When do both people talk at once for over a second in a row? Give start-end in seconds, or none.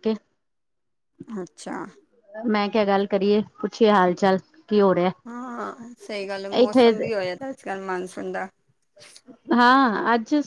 none